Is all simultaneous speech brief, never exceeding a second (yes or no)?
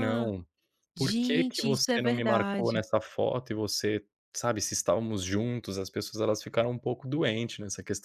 no